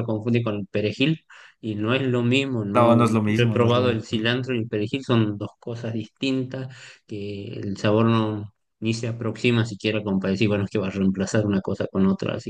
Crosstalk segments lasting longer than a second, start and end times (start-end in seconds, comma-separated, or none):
2.7-4.3